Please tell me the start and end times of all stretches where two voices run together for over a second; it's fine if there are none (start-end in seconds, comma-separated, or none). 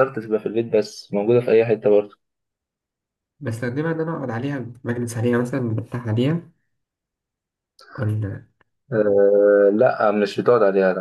none